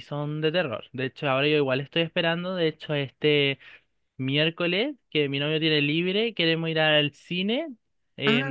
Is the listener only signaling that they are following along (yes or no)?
yes